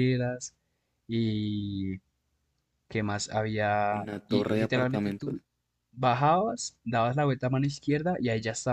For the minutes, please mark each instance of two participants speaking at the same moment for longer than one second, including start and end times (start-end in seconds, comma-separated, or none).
3.9-5.4